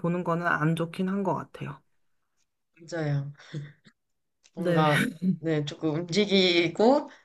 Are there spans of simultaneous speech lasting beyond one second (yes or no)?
no